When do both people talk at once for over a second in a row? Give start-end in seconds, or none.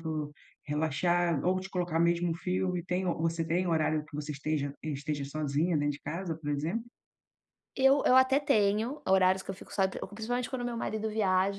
none